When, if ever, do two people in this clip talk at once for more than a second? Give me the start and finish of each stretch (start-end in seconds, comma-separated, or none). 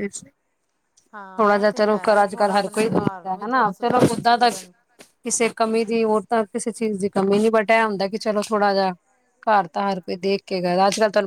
1.4-4.5